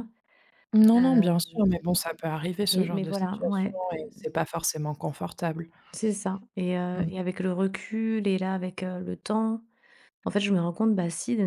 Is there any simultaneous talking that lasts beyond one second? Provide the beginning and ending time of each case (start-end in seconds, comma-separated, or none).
2.6-4.0